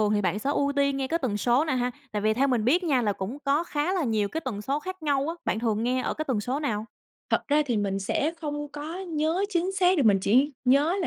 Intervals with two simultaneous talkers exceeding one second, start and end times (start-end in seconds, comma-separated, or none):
none